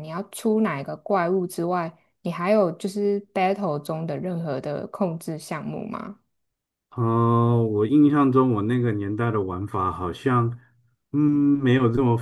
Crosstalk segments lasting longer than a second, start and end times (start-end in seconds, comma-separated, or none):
none